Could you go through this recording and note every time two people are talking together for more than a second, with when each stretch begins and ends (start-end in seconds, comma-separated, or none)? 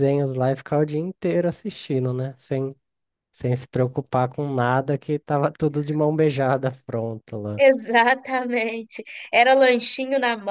none